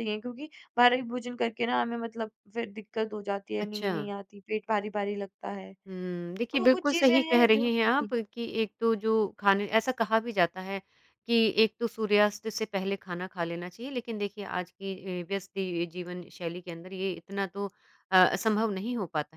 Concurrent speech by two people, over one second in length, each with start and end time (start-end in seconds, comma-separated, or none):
6.3-8.1